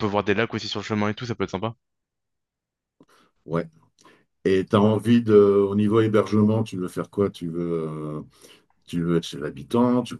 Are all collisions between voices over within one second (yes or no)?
yes